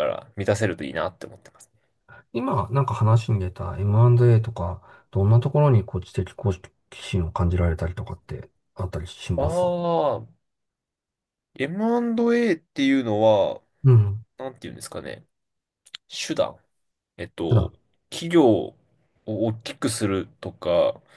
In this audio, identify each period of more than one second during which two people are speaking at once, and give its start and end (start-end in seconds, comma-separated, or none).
none